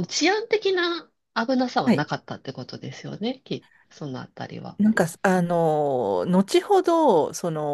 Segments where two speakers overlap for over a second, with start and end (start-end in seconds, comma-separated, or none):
none